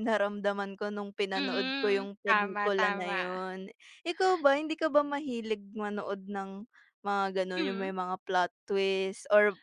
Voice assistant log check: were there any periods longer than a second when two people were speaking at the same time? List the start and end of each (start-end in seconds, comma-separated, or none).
1.4-3.2